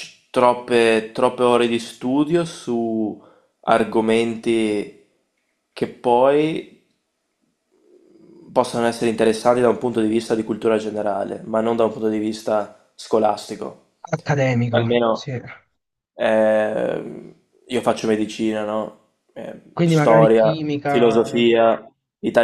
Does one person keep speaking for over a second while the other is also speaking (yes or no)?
yes